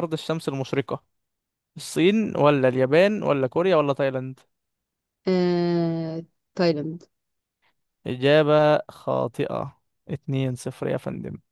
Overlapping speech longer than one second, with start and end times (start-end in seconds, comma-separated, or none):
none